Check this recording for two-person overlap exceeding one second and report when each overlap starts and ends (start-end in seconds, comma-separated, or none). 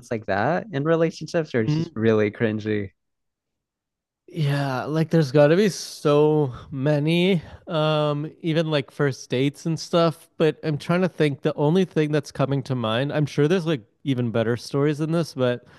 none